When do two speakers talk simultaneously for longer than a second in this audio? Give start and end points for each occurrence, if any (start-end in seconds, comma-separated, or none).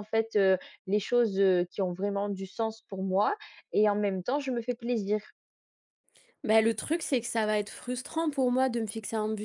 none